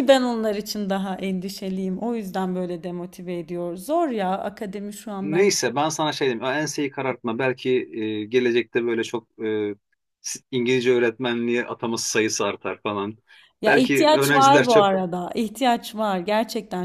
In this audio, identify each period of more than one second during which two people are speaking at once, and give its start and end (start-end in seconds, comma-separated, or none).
13.7-14.9